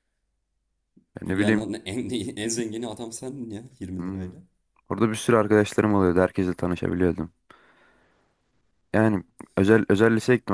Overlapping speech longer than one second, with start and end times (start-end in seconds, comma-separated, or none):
none